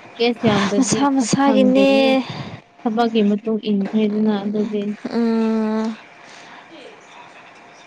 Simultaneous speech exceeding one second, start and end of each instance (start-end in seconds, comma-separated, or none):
0.8-2.1